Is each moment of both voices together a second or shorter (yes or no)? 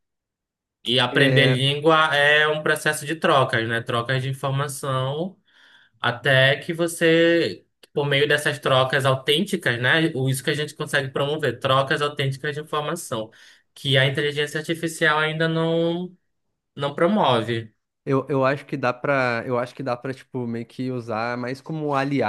yes